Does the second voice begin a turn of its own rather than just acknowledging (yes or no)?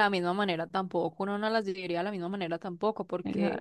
no